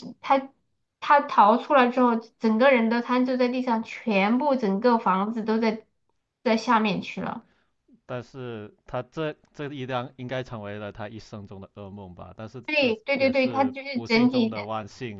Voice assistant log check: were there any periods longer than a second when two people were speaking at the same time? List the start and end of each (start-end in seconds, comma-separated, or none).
12.7-14.6